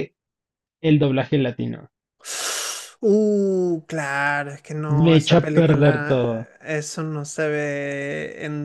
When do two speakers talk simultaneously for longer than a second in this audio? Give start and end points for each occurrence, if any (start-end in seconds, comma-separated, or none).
5.0-6.4